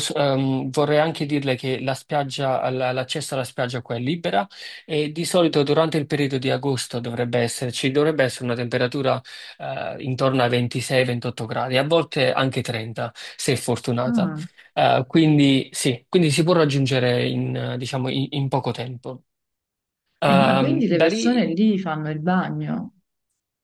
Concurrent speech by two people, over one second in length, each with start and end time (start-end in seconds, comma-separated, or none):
20.2-21.5